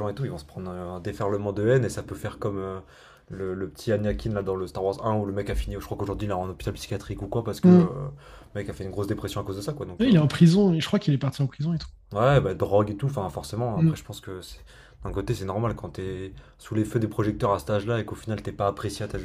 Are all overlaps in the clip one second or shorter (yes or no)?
yes